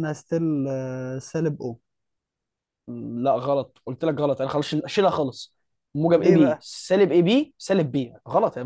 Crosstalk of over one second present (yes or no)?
no